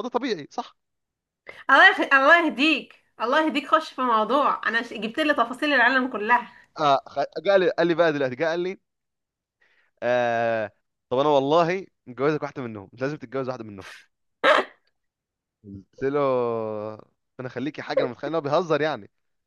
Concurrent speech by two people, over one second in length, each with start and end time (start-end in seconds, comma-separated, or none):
none